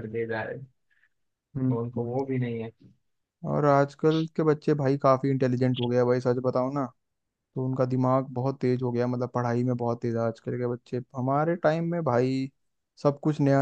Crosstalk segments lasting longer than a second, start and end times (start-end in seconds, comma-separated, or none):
none